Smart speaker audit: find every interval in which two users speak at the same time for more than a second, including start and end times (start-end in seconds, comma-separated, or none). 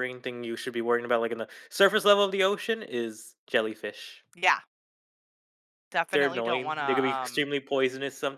6.1-7.5